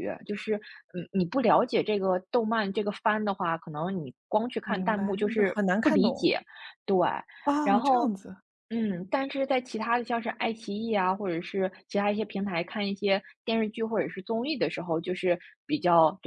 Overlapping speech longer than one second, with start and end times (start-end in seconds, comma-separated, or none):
4.6-6.3